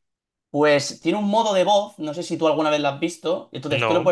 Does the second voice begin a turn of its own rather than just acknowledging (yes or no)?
no